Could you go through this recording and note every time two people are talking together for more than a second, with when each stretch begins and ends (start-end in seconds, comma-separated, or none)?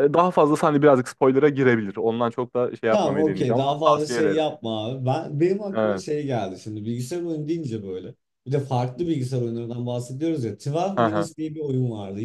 2.9-4.4